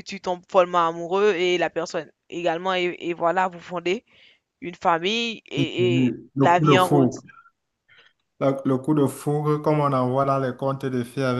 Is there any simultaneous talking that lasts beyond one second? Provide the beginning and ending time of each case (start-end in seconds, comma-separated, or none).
5.6-7.2